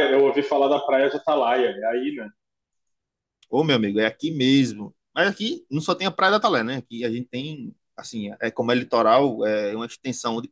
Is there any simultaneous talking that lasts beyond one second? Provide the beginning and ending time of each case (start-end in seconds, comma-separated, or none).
none